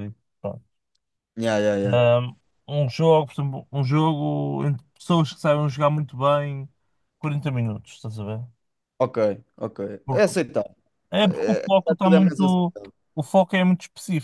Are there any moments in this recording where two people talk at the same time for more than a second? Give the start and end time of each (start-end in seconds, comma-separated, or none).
11.2-12.7